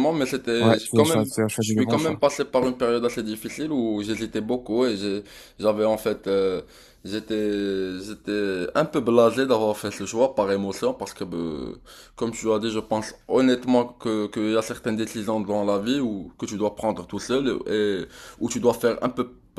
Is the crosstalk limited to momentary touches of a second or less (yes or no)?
no